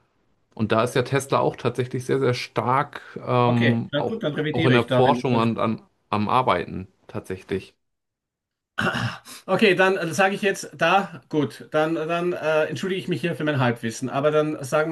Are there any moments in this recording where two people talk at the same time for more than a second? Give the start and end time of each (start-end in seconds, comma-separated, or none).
3.4-5.5